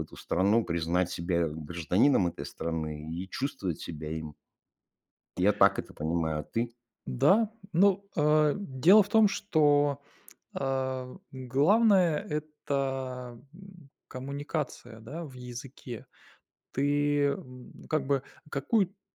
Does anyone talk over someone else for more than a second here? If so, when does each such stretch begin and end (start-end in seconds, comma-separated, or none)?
none